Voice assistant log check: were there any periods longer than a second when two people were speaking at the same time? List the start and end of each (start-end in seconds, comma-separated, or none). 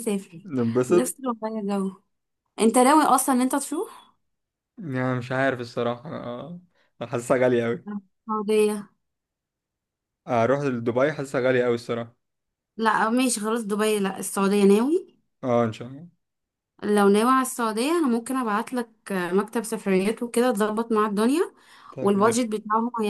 none